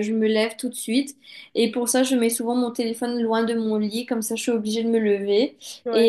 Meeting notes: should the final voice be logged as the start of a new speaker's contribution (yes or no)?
no